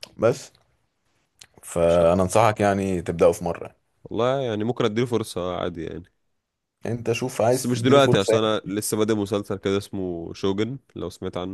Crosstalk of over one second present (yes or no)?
yes